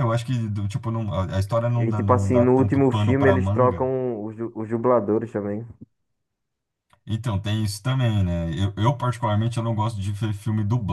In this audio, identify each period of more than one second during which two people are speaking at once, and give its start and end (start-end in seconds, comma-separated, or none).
1.7-3.9